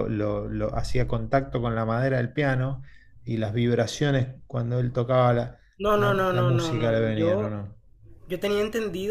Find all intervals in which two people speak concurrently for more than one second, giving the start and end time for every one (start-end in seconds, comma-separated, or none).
5.8-7.6